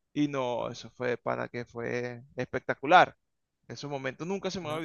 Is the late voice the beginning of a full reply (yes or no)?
yes